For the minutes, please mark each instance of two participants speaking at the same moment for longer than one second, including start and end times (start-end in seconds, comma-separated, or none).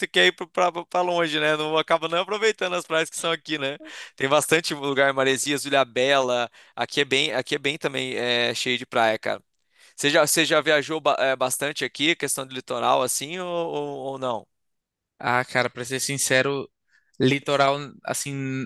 none